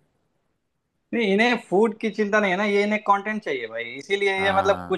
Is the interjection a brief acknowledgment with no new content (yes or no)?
yes